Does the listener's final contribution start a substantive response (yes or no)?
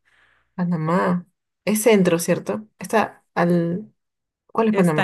yes